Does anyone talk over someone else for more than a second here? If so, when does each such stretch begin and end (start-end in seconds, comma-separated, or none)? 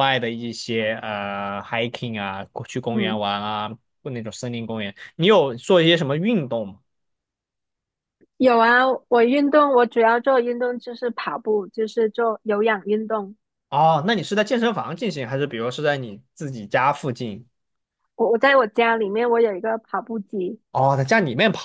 none